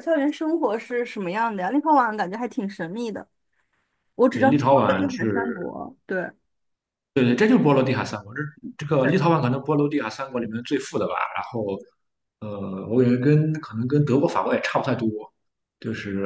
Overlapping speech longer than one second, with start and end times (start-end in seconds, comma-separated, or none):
4.3-5.7